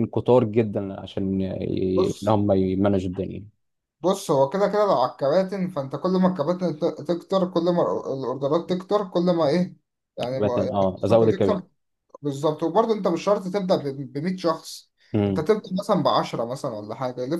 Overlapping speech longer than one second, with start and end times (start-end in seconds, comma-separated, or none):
10.4-11.6